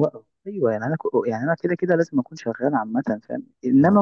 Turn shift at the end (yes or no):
no